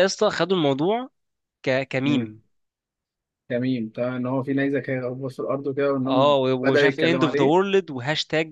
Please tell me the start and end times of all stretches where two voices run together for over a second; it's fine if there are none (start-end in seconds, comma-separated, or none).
6.1-7.6